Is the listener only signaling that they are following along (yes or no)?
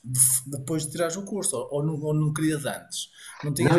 no